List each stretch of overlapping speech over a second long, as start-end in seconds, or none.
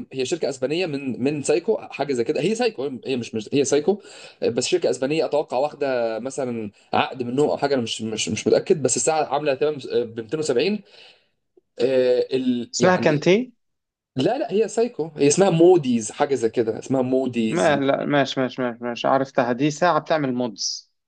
none